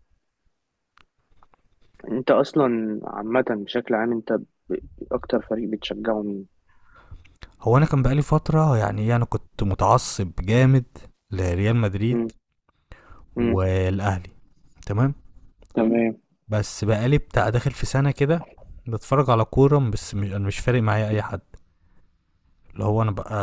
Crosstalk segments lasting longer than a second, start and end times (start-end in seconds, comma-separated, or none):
none